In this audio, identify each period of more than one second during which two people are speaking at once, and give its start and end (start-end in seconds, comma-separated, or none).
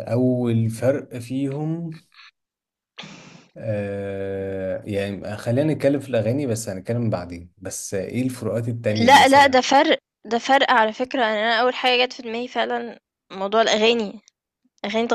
none